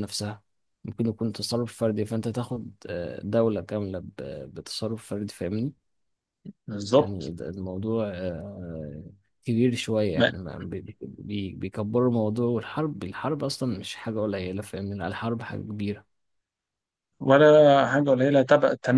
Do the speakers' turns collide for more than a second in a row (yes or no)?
no